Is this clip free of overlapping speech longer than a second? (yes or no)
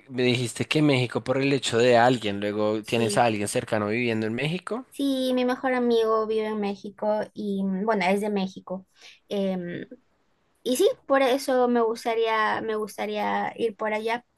yes